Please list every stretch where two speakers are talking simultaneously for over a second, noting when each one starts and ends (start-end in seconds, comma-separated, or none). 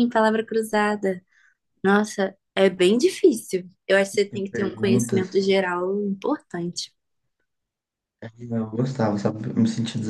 4.1-5.6